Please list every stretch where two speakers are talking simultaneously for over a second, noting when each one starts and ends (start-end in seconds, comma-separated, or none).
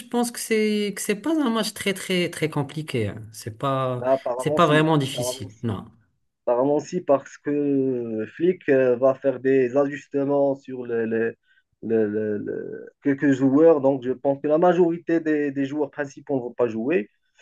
4.0-5.7